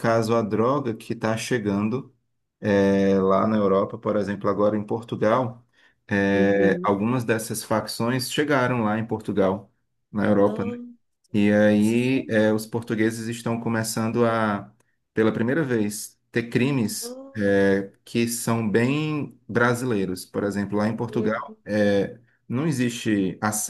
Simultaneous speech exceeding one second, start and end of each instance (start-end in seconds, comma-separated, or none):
11.8-13.2